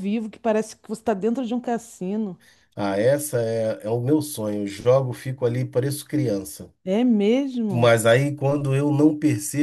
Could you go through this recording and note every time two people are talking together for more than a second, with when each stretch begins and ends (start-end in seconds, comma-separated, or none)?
none